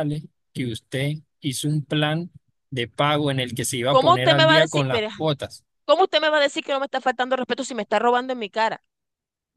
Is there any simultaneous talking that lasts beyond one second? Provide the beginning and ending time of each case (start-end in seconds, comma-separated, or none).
3.9-5.1